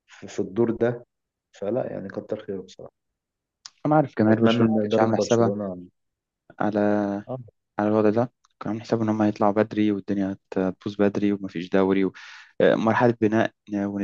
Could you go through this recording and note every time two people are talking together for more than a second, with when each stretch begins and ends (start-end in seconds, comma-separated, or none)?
4.3-5.5